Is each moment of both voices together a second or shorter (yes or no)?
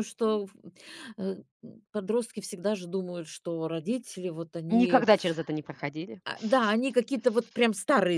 yes